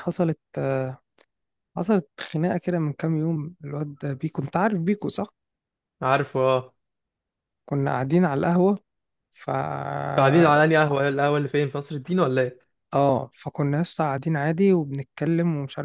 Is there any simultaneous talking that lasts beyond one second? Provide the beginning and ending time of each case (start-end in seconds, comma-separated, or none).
none